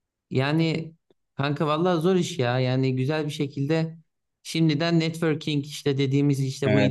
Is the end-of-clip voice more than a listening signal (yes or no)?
no